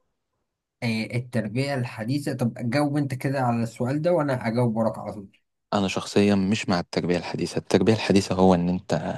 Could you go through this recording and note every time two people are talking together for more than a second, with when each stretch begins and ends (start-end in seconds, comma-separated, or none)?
none